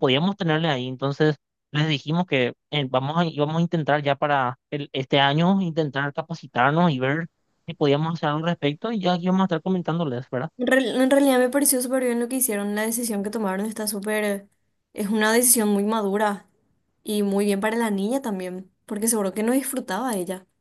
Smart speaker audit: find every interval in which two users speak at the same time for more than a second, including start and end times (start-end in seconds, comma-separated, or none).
none